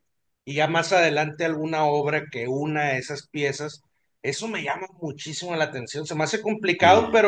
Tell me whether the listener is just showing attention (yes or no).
yes